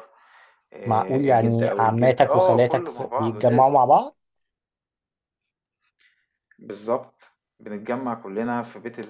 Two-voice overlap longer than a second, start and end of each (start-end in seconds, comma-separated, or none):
0.9-3.8